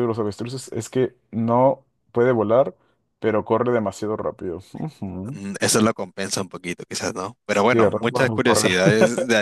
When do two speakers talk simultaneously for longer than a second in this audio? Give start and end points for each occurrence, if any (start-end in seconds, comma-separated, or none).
7.5-8.7